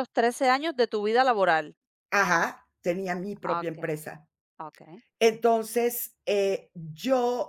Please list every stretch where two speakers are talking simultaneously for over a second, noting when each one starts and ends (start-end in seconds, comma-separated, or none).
none